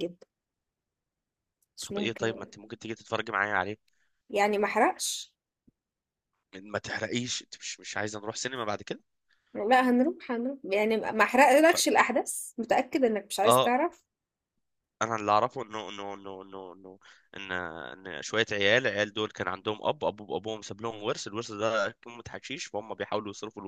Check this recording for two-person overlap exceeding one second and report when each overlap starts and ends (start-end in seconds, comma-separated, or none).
none